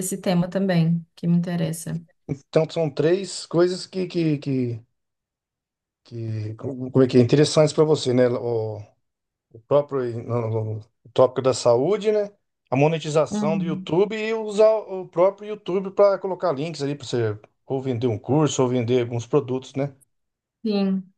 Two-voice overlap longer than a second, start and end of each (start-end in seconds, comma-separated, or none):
none